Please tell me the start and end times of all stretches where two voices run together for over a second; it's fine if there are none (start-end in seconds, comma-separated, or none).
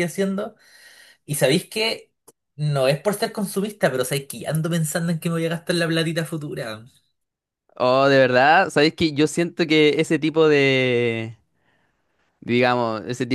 none